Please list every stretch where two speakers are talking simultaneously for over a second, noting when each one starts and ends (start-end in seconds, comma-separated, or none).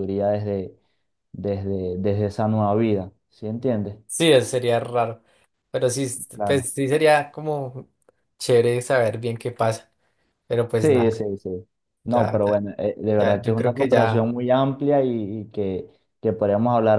13.1-14.3